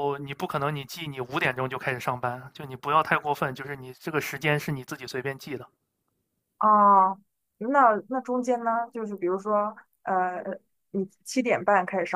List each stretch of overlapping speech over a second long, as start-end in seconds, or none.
none